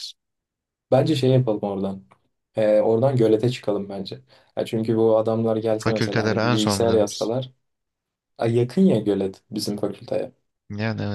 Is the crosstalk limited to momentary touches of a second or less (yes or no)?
no